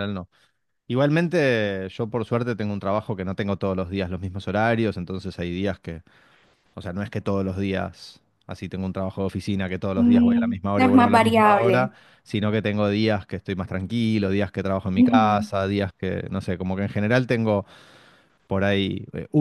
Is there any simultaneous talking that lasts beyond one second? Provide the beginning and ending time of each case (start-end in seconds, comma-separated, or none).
10.0-11.9